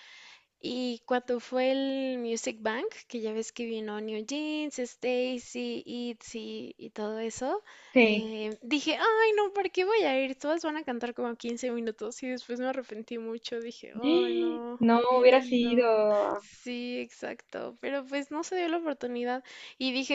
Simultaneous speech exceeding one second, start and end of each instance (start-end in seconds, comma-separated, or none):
14.0-15.8